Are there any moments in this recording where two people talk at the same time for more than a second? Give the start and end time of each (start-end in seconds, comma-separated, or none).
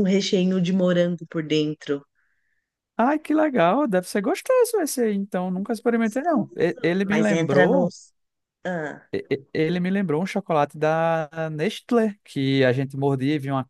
5.9-7.9